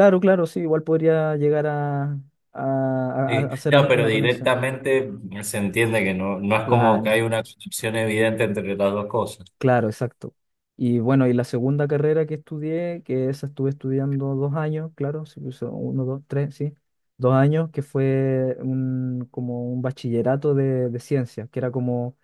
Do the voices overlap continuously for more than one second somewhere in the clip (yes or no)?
yes